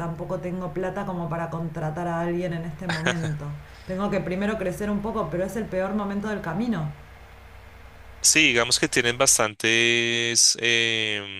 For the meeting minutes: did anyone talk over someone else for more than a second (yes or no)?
no